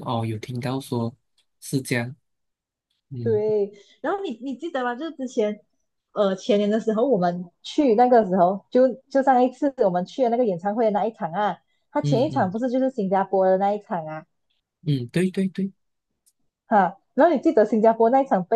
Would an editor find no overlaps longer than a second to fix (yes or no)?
yes